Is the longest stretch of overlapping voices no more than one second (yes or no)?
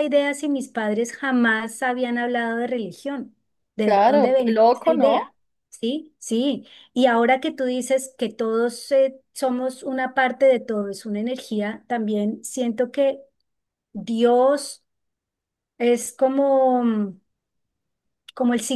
no